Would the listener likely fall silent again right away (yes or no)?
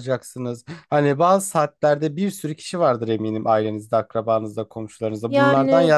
yes